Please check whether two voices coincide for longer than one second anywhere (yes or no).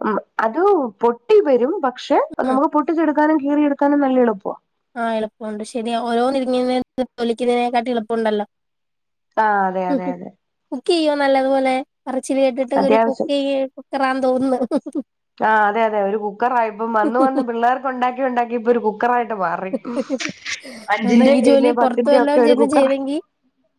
yes